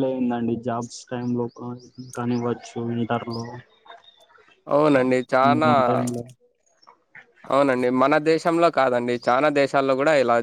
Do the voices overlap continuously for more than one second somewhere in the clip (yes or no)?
no